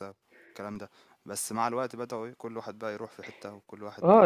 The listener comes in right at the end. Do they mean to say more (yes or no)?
yes